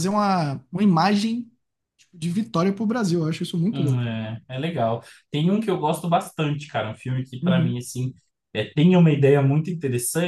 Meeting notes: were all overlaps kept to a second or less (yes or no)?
yes